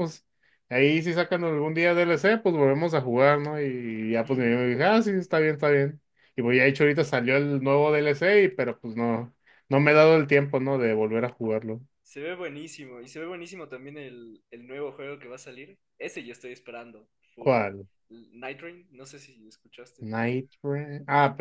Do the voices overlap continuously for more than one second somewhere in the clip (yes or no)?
no